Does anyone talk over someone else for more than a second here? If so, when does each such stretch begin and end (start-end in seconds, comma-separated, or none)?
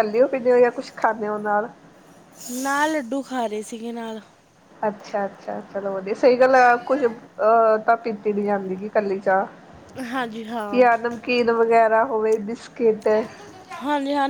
none